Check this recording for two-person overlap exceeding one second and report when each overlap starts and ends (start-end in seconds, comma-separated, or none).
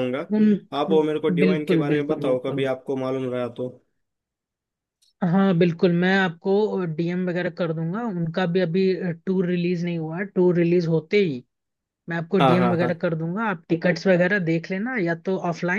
0.9-2.7